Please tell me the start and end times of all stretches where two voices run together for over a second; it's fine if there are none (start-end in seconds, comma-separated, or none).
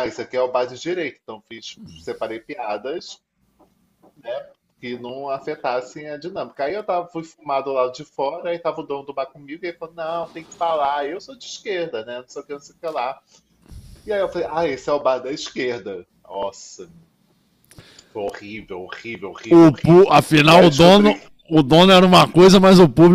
19.5-21.2